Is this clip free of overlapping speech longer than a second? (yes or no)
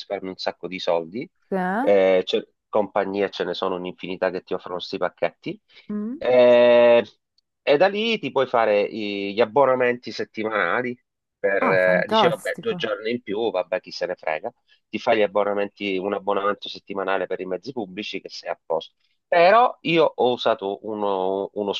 no